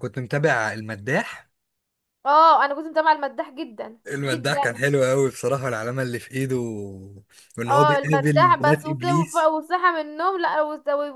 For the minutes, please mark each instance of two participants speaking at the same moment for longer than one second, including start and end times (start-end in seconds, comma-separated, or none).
7.7-9.5